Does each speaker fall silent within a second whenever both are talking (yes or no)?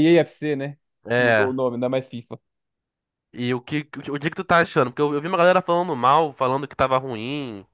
yes